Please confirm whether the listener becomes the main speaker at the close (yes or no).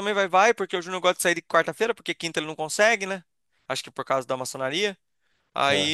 no